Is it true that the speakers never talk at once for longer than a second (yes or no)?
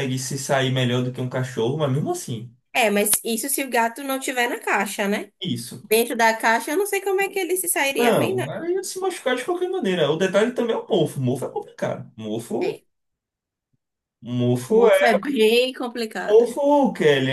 yes